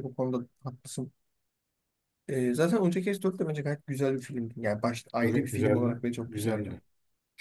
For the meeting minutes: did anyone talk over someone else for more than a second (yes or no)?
yes